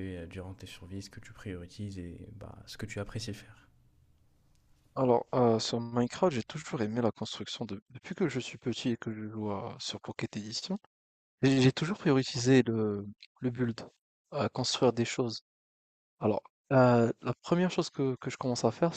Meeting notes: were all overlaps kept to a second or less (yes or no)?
yes